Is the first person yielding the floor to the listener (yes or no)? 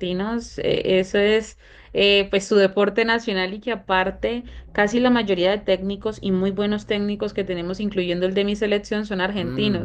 yes